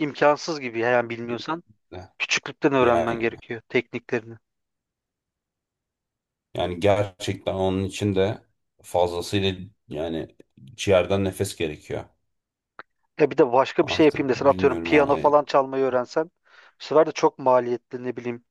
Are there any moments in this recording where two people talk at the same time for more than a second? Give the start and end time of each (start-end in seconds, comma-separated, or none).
13.8-15.3